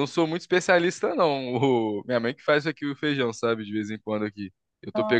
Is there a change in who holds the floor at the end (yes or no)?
no